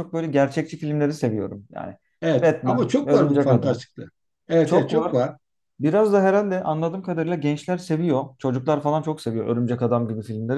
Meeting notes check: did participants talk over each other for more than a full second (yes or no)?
yes